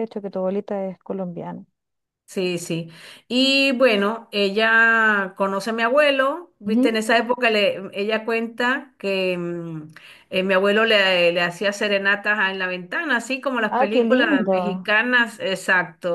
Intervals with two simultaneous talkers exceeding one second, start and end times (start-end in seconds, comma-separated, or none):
13.7-14.9